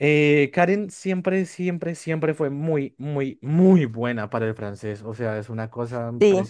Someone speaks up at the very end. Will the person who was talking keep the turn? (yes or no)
yes